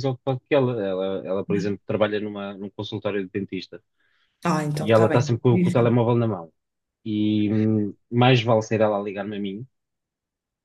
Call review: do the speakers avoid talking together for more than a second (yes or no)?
no